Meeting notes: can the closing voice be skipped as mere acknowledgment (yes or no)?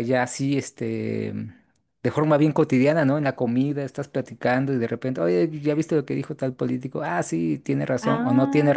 yes